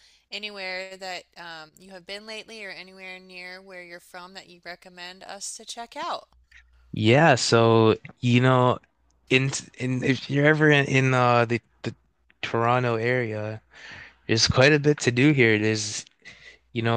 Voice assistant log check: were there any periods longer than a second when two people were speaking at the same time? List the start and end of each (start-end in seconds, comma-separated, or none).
none